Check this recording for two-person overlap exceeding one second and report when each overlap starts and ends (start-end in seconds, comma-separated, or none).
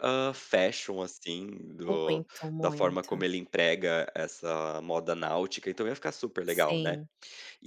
1.9-3.2